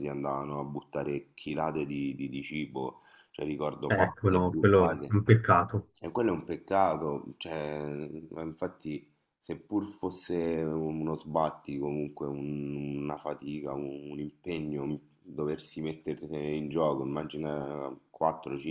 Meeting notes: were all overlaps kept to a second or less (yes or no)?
no